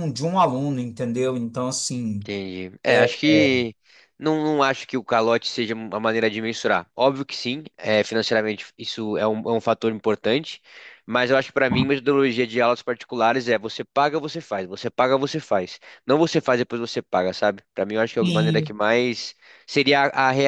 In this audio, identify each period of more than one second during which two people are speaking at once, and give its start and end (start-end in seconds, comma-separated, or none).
none